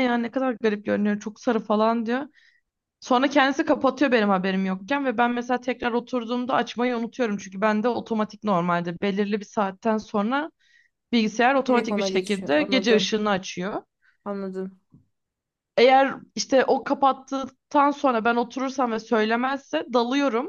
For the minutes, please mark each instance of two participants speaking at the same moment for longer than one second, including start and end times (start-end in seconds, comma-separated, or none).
11.7-13.1